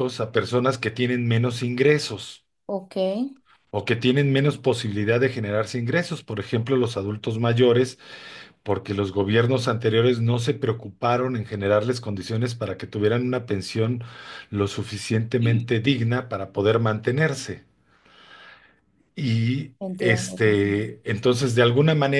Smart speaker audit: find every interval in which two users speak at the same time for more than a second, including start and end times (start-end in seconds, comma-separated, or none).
19.8-21.0